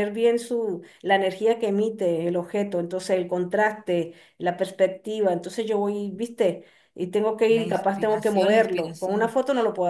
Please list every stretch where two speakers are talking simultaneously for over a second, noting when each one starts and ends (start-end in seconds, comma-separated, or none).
7.5-9.3